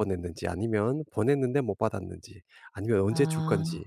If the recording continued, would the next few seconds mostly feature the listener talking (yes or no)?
no